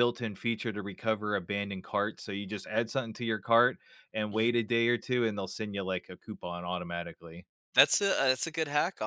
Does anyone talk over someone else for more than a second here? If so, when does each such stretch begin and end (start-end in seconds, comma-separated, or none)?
none